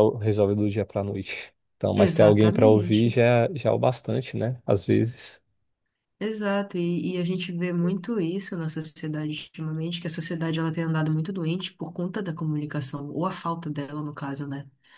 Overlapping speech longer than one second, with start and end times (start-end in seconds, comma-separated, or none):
1.9-3.2